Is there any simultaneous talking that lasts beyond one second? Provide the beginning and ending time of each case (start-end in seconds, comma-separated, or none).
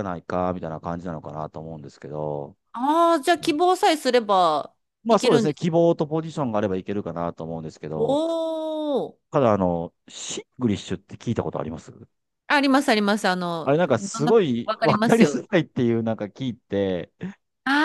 13.6-15.4